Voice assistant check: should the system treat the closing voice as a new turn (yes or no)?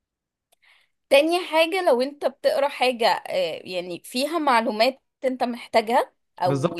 yes